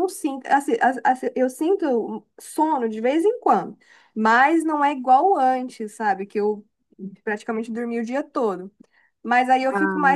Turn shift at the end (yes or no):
no